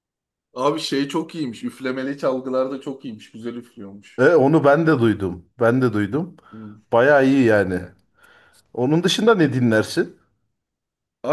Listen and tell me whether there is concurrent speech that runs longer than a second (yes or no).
no